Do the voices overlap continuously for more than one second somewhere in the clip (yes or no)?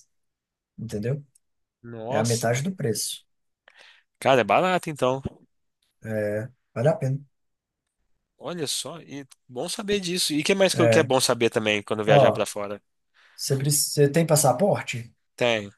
no